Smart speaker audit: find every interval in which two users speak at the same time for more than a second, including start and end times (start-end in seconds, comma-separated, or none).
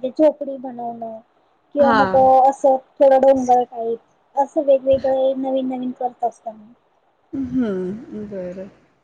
none